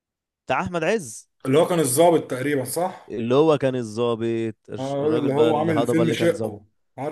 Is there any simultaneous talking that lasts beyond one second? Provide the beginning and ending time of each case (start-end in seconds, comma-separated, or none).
4.8-6.6